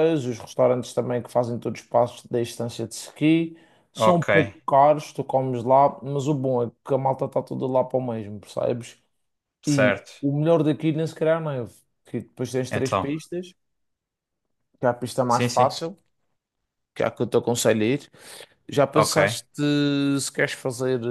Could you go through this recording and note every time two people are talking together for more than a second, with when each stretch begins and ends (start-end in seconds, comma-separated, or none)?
none